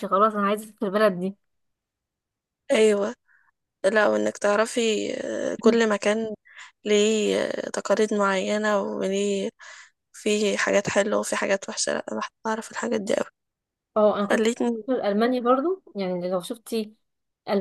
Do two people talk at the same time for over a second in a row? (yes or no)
no